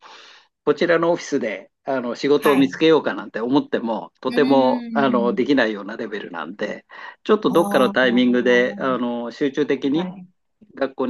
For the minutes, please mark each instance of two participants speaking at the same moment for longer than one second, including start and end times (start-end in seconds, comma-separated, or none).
7.5-9.1